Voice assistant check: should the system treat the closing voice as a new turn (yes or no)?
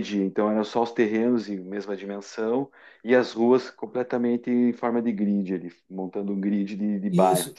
yes